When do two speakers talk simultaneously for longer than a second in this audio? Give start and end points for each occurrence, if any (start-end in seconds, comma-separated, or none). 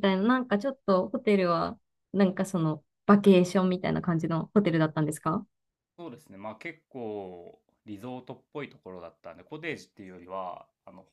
none